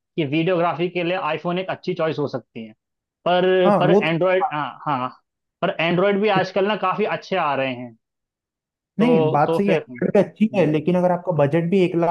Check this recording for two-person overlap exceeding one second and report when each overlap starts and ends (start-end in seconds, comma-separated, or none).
9.0-10.7